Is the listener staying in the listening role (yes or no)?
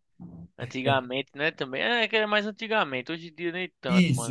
no